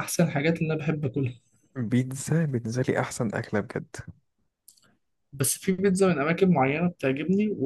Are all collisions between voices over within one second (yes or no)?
yes